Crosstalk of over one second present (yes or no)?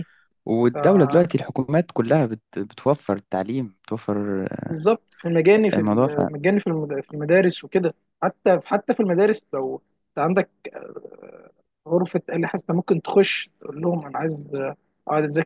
no